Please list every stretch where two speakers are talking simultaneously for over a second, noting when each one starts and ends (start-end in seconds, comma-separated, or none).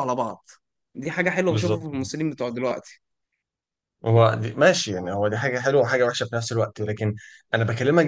none